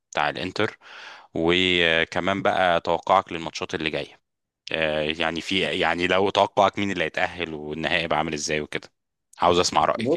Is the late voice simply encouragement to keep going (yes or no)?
no